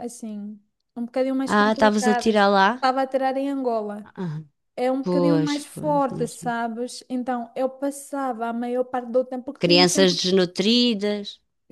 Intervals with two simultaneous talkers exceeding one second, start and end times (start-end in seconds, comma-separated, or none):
1.5-2.9, 5.0-6.5